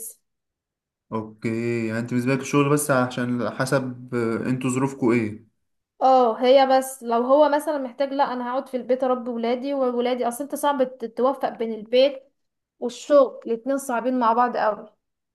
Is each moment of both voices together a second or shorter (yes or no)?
yes